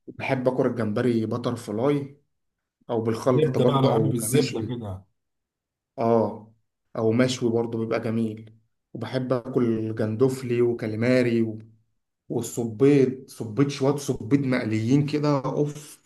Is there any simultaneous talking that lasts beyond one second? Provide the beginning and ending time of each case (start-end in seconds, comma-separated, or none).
3.3-4.8